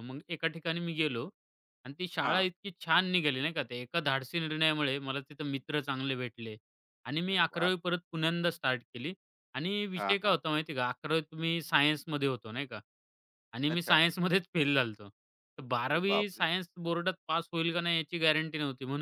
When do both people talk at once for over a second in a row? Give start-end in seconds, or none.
none